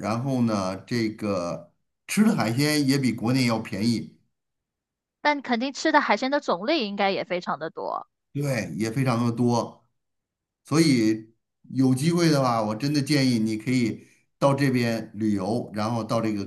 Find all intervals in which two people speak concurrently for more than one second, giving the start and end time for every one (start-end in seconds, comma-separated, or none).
none